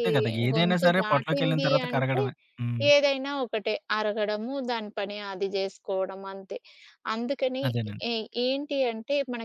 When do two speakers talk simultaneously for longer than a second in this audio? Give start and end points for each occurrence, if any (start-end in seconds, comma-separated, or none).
0.5-2.2